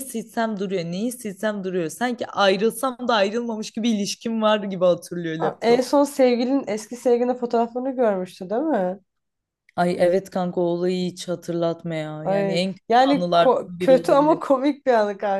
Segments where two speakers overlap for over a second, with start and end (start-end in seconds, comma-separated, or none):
12.2-14.4